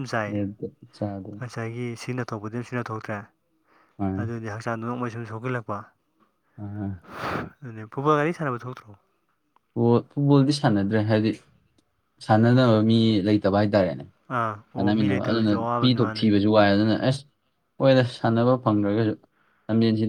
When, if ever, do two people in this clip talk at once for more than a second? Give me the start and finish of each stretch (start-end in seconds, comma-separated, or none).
14.7-16.2